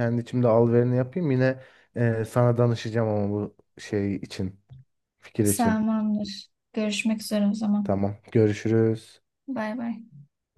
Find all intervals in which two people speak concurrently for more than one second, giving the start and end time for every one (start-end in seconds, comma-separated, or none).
none